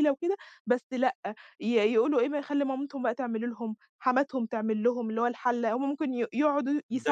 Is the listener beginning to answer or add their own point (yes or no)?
yes